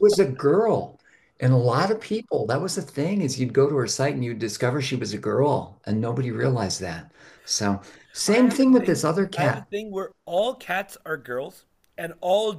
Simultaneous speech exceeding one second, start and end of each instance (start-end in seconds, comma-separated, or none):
8.3-9.7